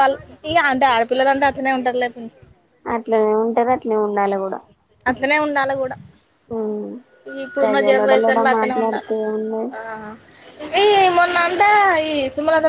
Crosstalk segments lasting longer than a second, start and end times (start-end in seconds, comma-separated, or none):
7.6-9.1